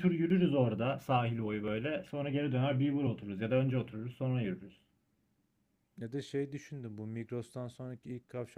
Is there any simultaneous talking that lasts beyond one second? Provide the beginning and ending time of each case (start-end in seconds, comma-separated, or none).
none